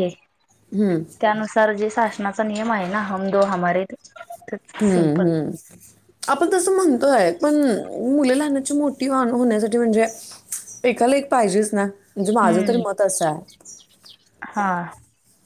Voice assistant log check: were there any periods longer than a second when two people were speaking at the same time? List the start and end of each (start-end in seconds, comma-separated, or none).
none